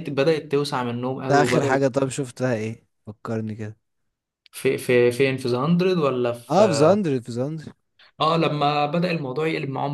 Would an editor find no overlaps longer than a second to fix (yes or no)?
yes